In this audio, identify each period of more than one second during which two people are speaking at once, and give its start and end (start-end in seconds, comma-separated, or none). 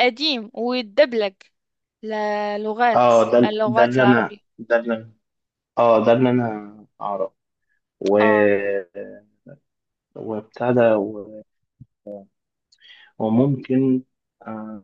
2.9-4.4